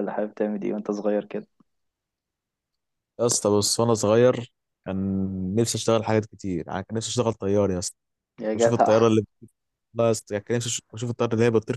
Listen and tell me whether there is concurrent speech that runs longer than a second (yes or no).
no